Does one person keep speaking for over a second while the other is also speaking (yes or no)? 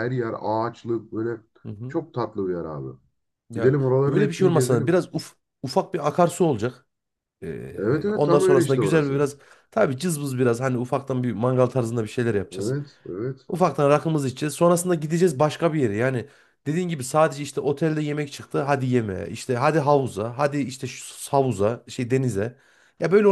yes